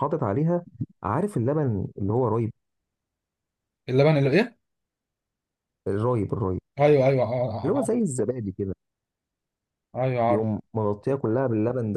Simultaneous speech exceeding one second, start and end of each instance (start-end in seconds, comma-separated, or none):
none